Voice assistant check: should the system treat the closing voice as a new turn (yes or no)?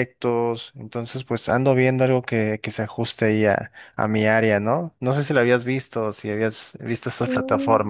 yes